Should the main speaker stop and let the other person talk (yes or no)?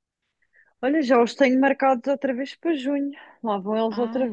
yes